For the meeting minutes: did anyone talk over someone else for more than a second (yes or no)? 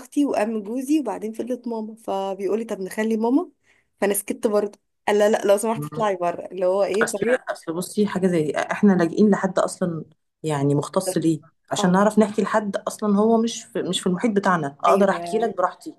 no